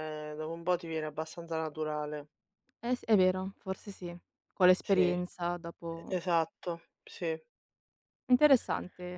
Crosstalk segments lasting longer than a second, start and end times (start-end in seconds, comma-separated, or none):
none